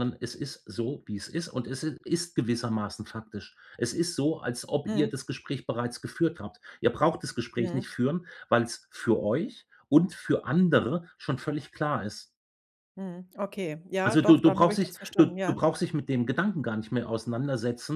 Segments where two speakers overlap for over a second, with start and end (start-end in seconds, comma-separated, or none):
14.1-15.6